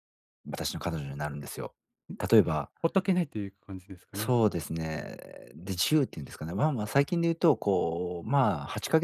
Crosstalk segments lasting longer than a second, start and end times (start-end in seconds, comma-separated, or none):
none